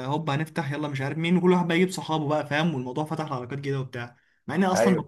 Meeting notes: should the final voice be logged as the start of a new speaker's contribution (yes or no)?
no